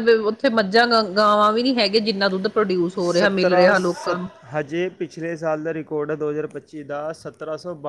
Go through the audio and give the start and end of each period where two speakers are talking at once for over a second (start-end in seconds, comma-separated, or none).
none